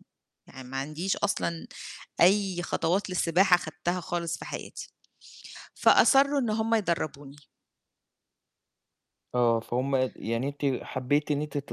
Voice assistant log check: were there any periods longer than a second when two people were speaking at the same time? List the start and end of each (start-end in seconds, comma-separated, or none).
none